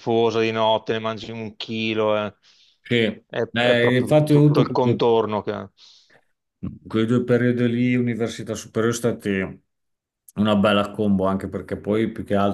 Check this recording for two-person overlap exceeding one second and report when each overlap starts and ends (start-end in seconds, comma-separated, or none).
3.3-5.0